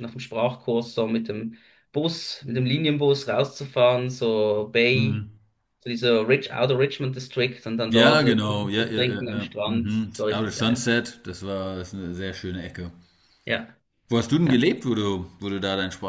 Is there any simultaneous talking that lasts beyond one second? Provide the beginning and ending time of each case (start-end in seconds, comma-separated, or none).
7.9-10.8